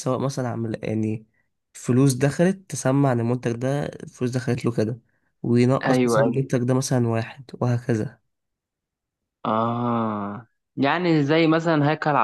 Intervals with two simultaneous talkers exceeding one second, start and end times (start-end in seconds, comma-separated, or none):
none